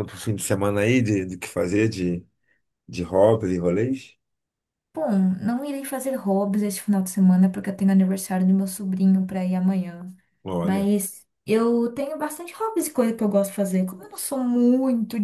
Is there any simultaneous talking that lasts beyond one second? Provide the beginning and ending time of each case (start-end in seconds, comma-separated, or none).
none